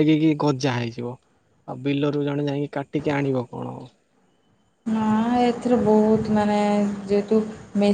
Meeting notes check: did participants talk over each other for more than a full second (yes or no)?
no